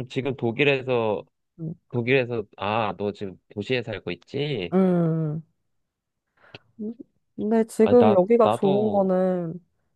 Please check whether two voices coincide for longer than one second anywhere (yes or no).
yes